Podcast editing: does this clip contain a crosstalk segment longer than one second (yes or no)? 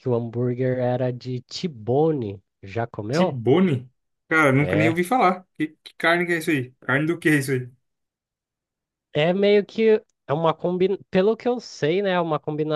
no